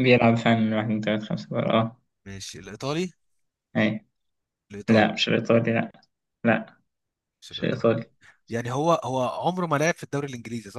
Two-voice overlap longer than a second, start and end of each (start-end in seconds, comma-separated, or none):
none